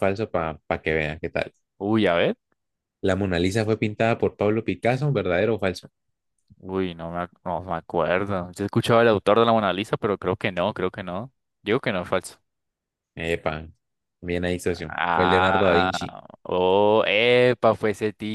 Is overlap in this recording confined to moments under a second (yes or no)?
no